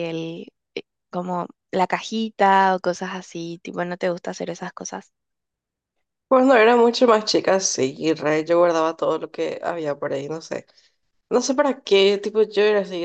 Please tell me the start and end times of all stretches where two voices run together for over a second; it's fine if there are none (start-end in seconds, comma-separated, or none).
none